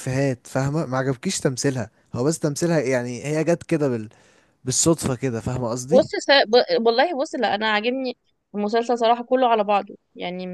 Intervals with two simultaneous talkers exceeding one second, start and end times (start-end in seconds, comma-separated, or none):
none